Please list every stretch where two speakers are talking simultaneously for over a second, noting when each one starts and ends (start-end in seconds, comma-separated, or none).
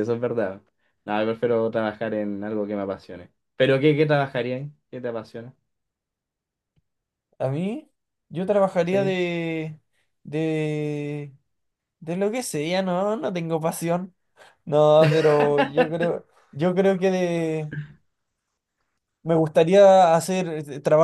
none